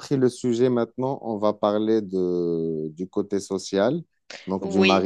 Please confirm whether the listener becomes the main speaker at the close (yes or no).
no